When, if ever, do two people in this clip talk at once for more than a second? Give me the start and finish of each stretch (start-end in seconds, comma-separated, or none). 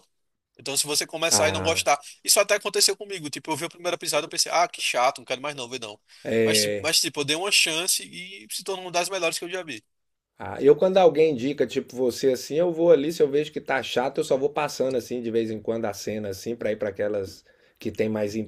none